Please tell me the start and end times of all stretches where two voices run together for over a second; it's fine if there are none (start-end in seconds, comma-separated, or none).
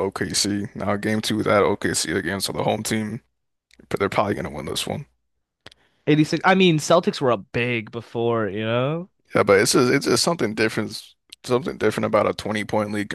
none